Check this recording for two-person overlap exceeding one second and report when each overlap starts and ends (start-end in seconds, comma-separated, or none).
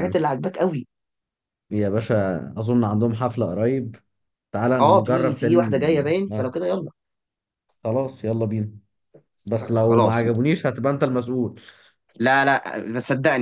4.8-6.4